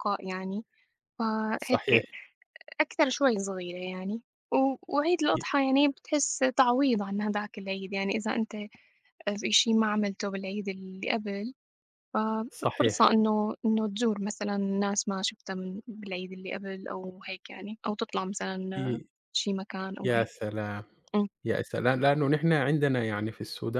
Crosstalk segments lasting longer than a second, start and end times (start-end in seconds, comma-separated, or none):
none